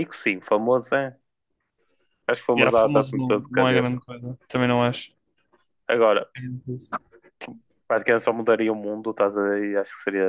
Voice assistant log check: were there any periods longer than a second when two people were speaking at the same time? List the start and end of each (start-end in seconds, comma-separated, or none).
2.5-4.0